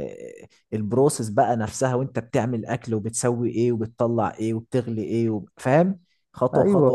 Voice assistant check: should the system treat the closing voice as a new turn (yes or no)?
yes